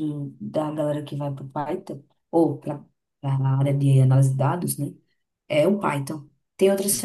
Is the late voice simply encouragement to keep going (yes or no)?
yes